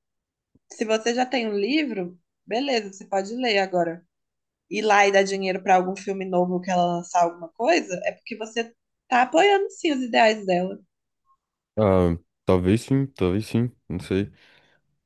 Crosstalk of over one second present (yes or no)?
no